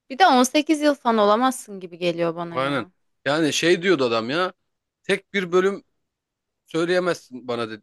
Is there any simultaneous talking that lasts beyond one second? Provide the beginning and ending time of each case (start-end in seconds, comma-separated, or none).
none